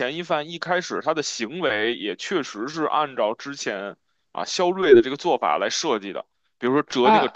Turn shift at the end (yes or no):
no